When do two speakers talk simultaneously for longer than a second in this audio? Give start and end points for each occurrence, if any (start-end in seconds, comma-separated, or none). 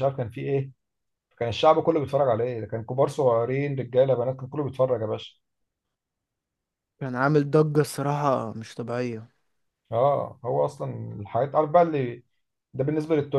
none